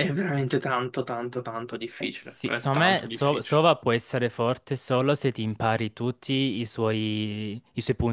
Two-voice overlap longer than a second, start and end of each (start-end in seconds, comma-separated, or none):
2.2-3.6